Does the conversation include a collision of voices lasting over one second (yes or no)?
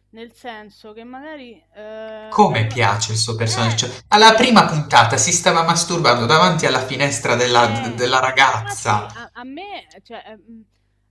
yes